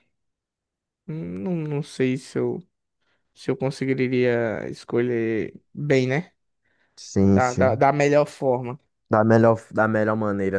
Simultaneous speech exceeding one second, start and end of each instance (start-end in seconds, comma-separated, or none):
none